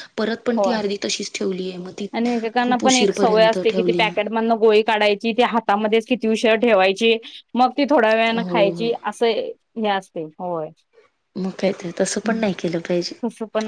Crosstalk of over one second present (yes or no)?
yes